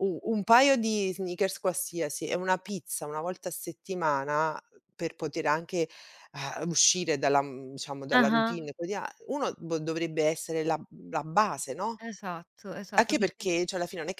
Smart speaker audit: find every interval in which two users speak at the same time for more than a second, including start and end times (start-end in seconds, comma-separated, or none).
none